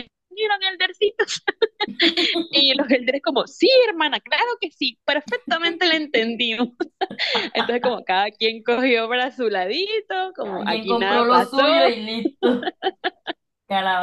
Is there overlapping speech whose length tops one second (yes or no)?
yes